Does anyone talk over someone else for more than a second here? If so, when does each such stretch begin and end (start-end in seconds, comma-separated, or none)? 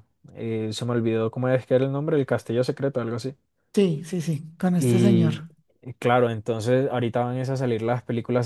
none